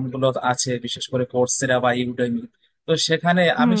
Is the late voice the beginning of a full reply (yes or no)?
no